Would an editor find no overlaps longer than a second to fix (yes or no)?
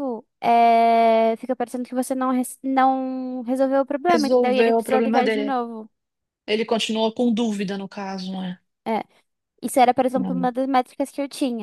no